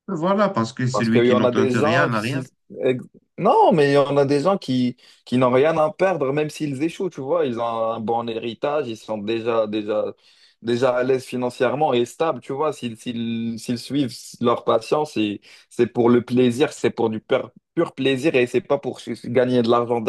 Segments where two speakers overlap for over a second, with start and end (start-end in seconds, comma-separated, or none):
0.9-2.4